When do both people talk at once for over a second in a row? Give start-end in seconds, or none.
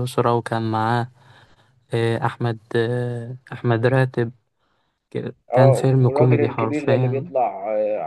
5.5-7.3